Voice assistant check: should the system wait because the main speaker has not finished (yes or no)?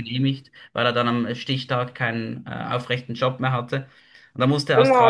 no